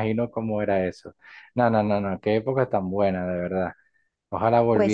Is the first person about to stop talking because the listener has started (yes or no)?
no